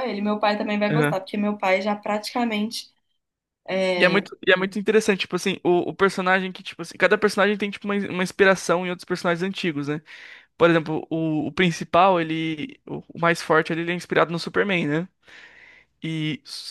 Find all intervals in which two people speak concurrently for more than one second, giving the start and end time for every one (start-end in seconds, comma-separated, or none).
none